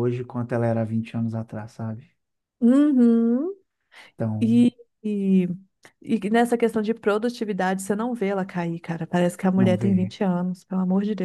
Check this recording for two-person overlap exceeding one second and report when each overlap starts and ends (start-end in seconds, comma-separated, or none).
none